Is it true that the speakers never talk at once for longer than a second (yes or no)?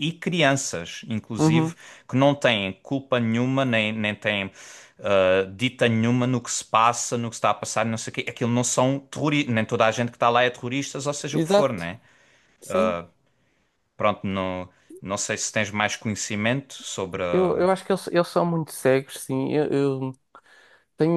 yes